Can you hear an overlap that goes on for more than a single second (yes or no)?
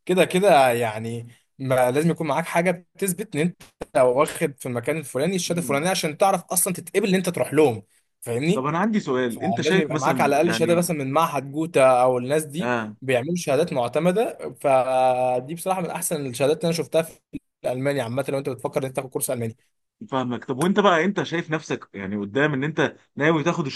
yes